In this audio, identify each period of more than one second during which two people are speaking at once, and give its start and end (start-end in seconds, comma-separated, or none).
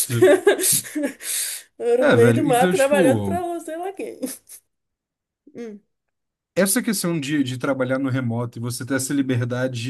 2.0-3.4